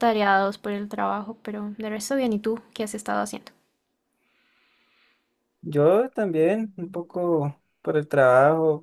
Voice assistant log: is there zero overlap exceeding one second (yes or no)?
yes